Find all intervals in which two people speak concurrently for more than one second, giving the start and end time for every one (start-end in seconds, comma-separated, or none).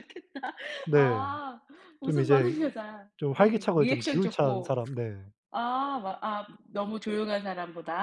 3.2-4.7